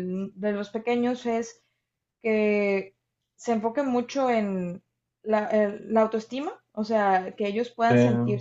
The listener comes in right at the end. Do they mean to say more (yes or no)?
no